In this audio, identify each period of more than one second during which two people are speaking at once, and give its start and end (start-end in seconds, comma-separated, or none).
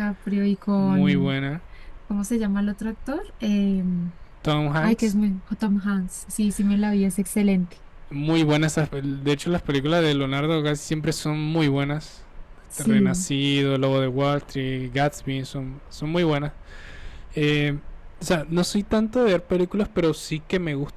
none